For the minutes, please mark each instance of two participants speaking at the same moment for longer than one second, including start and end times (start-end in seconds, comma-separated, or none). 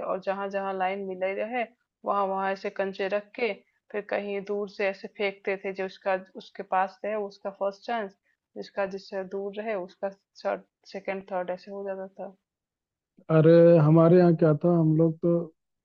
none